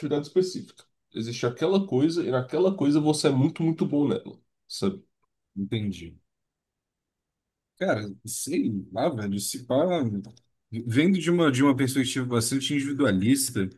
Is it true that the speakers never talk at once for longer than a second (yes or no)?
yes